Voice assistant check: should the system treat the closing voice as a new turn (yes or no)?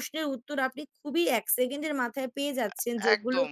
no